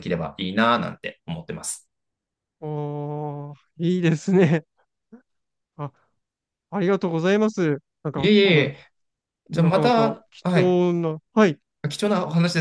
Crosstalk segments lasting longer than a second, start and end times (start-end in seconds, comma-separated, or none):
9.5-10.8